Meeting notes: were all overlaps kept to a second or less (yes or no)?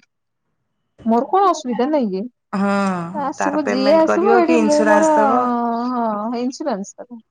no